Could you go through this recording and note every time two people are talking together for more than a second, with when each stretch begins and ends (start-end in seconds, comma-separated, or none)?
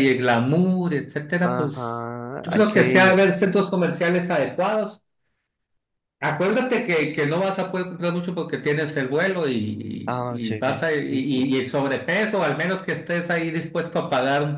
1.4-3.2, 10.1-11.5